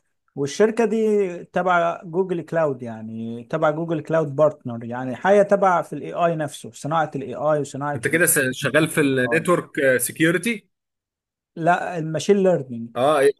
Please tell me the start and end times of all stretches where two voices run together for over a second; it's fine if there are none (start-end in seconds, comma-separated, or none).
7.9-9.4